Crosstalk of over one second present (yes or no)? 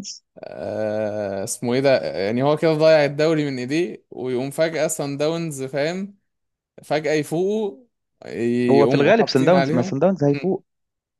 yes